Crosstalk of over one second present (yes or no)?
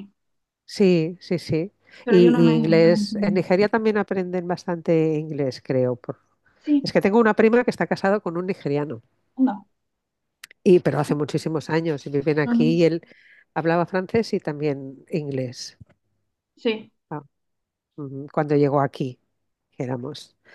yes